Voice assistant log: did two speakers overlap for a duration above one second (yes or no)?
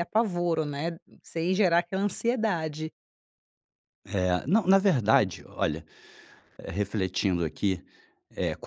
no